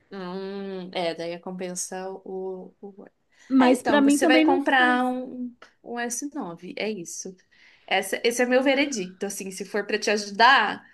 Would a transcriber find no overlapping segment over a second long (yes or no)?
no